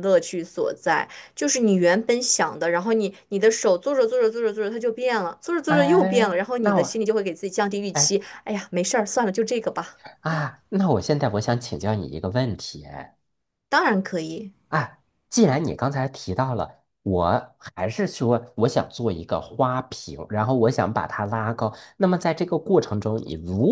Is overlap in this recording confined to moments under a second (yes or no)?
no